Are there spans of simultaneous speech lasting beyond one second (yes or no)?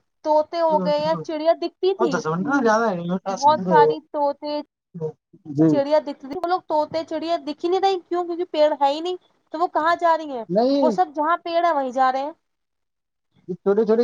no